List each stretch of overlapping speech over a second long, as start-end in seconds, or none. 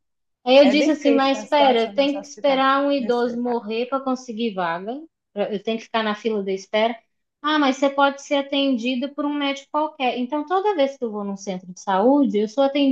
0.6-3.3